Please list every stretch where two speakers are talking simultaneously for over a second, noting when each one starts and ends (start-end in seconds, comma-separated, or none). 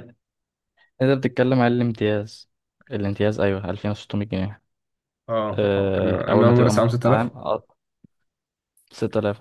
5.5-7.3